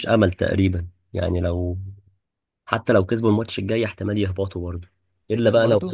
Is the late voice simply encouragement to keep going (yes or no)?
yes